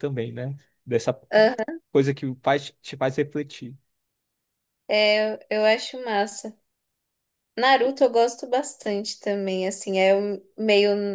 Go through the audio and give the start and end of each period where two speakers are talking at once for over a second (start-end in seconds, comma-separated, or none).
none